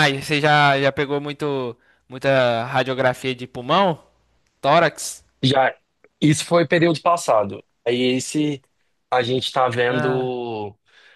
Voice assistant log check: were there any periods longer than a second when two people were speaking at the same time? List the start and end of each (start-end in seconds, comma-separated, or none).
none